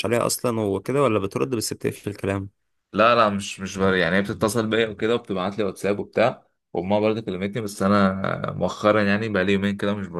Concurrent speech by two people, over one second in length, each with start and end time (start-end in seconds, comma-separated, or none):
none